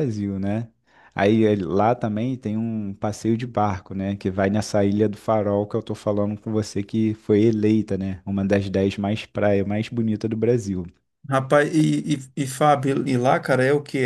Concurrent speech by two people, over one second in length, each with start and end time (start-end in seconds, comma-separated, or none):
none